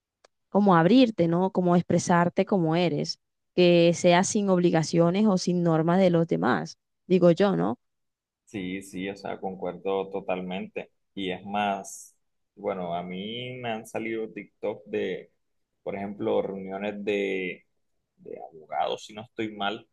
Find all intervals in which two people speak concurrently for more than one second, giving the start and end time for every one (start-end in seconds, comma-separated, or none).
none